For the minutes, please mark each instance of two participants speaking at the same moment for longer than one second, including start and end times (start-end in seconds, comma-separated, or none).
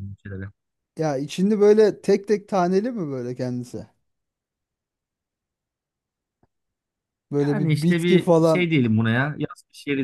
7.4-8.7